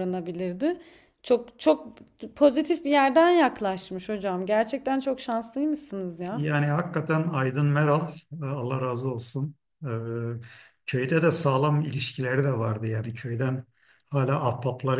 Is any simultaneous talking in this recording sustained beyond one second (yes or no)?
no